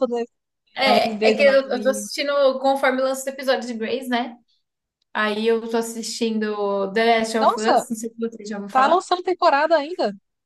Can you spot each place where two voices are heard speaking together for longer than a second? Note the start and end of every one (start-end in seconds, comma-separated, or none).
0.8-2.1